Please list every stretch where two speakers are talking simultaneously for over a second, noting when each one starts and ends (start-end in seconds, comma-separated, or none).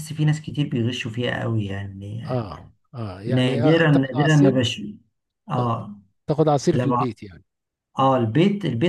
3.3-4.5